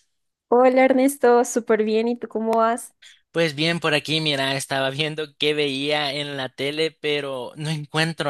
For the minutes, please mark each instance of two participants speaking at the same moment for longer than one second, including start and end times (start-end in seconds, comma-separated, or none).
none